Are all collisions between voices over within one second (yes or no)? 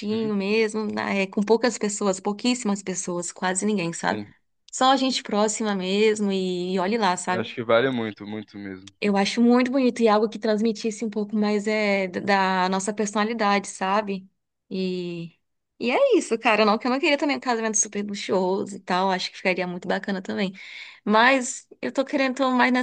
yes